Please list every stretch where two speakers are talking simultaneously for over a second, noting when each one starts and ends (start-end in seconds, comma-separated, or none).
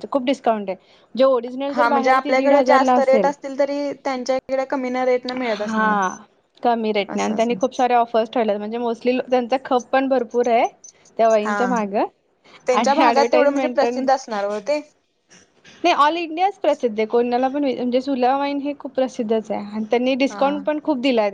12.7-14.1